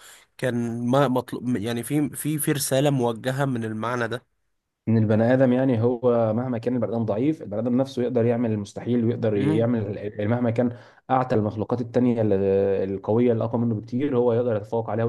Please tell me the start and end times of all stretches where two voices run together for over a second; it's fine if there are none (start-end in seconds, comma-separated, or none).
none